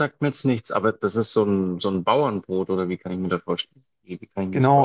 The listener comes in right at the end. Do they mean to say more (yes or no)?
yes